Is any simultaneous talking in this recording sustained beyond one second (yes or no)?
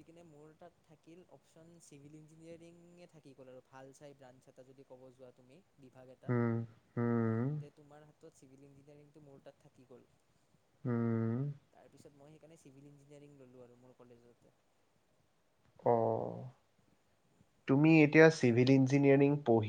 no